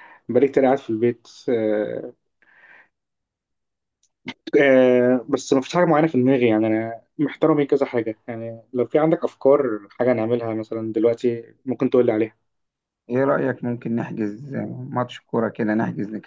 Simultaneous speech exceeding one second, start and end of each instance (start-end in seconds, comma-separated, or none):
none